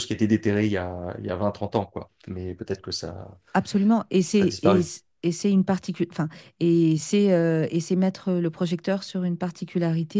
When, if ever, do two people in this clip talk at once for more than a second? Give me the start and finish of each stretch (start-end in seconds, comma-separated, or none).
none